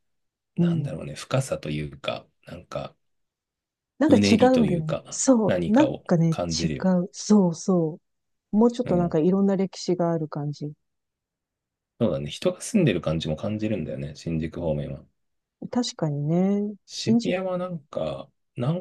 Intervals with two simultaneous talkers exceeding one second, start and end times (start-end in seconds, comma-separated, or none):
4.1-6.7